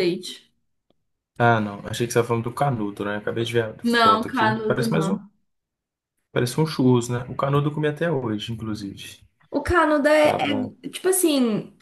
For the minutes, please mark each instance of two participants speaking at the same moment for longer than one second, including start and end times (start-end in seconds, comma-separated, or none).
3.8-5.2